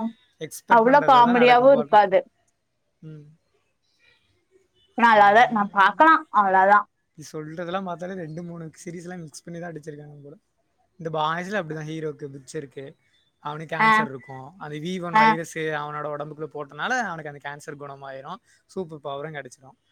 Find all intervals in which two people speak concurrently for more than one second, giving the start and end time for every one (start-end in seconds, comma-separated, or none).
0.8-2.1